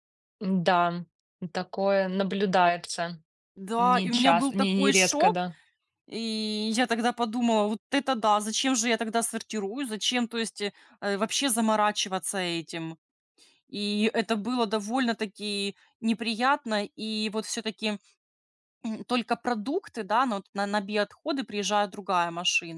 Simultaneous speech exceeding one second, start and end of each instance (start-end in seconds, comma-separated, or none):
3.8-5.4